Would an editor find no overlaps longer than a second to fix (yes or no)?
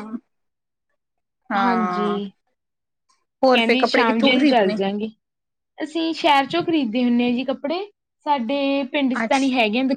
no